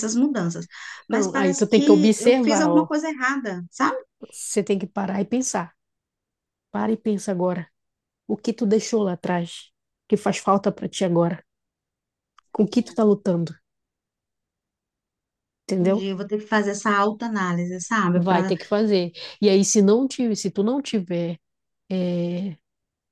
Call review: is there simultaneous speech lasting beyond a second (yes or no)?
yes